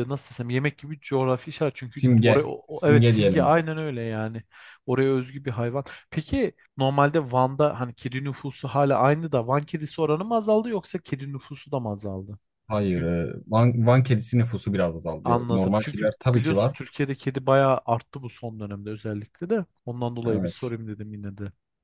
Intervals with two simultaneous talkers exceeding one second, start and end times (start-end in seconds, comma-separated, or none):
1.9-3.5, 15.2-16.7